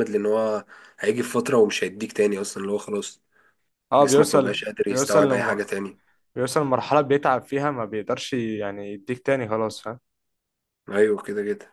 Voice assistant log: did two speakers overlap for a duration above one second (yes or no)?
yes